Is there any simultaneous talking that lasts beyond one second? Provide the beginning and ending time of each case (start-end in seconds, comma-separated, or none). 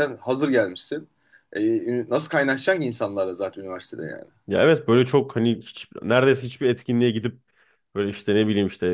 none